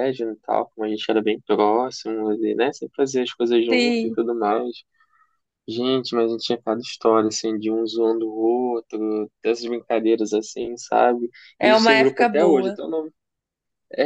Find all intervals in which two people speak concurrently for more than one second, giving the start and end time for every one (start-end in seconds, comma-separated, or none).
11.6-12.8